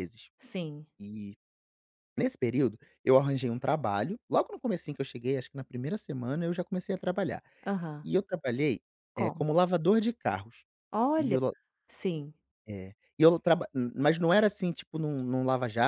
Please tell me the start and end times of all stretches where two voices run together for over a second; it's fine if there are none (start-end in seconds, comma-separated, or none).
none